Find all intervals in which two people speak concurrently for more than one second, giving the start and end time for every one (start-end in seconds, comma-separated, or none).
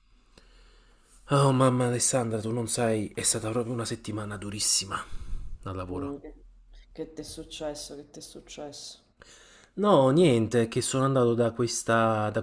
none